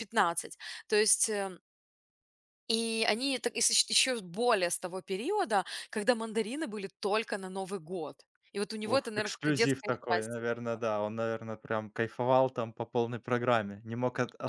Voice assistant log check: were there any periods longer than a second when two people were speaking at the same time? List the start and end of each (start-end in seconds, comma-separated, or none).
8.8-10.4